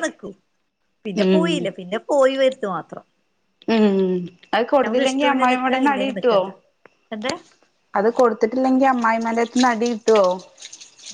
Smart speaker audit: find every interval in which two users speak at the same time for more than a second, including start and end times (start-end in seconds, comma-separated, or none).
4.8-6.4